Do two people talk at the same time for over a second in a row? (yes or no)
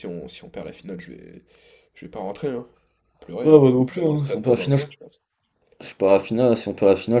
yes